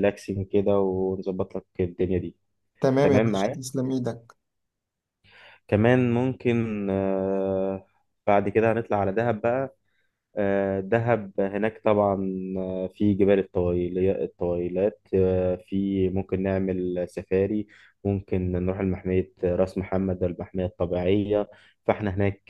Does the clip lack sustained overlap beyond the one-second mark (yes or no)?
yes